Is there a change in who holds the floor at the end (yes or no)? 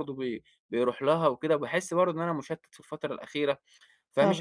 no